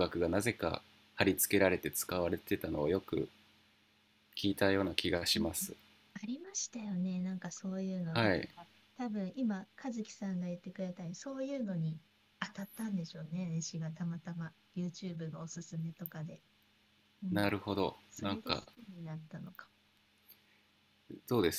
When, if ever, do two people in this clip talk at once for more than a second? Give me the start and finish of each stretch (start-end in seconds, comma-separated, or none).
none